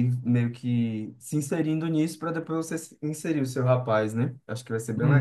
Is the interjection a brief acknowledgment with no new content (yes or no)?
no